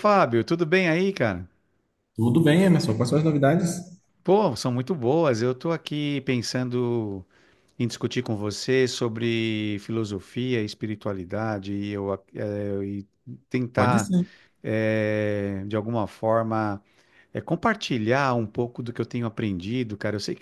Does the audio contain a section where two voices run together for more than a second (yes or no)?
no